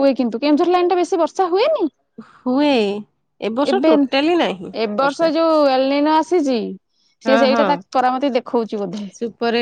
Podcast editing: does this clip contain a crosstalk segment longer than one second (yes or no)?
yes